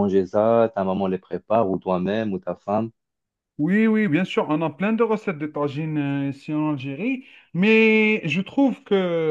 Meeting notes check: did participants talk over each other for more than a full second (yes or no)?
no